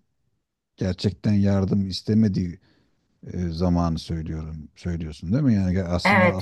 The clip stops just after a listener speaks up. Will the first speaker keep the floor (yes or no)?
no